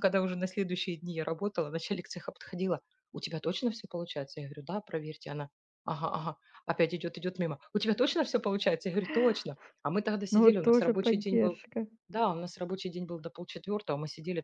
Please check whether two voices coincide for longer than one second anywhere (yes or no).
yes